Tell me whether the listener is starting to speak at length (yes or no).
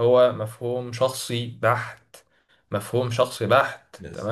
no